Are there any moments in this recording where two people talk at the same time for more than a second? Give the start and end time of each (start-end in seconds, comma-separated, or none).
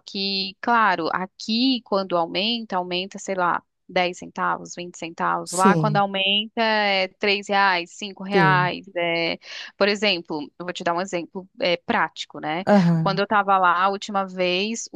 none